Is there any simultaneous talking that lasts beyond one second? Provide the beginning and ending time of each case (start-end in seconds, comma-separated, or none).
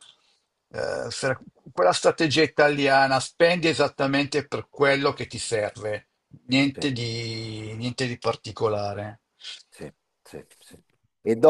none